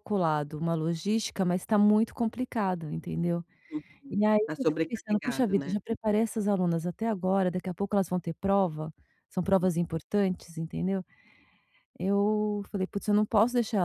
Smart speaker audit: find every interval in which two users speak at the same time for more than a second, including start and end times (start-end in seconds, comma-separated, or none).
4.1-5.8